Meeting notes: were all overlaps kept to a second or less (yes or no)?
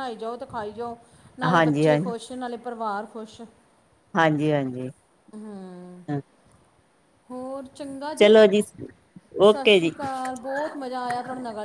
yes